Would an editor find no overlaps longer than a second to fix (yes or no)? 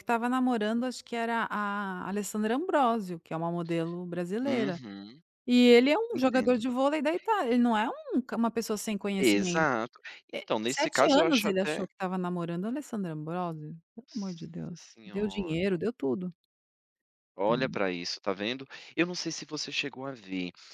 no